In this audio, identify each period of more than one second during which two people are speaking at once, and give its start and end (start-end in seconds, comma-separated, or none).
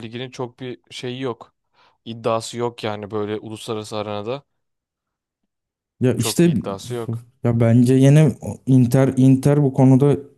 none